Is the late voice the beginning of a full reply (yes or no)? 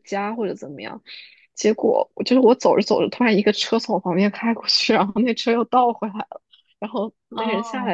no